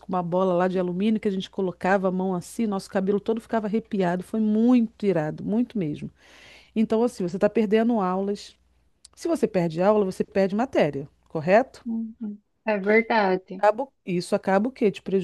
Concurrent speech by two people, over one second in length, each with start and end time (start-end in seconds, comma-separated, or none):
none